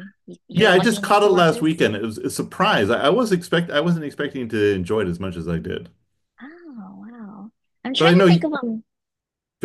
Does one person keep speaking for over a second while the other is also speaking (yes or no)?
yes